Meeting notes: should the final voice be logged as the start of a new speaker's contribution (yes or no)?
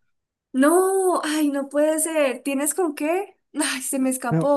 yes